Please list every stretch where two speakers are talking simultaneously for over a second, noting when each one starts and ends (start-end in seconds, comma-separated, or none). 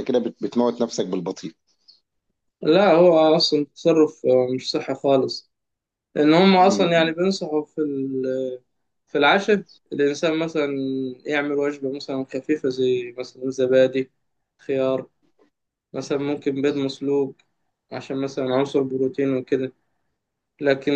none